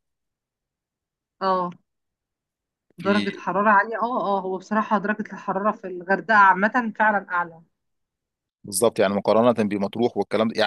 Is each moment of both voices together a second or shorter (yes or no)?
yes